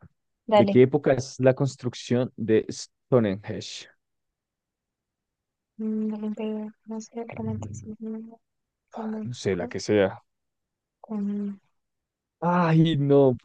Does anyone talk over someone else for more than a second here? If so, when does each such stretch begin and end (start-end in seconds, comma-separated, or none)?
none